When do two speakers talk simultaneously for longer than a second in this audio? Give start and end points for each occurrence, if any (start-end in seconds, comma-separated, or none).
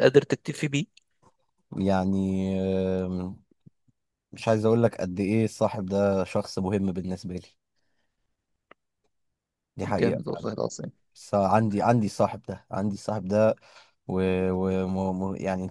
none